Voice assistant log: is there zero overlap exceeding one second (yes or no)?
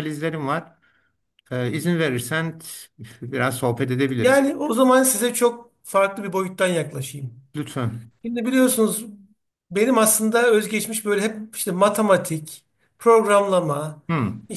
yes